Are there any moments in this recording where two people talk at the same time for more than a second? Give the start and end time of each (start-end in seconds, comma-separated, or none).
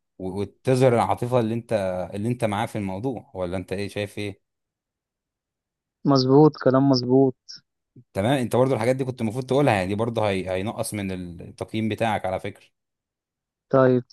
none